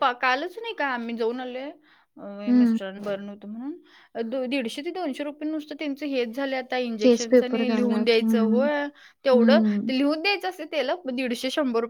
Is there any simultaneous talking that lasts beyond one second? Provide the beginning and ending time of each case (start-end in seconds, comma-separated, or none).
7.0-8.7